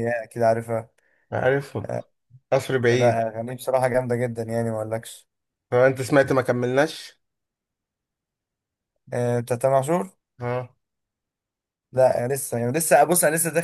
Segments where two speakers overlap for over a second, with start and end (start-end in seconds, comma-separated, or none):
none